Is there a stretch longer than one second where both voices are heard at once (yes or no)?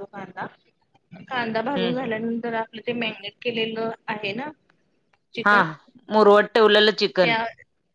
no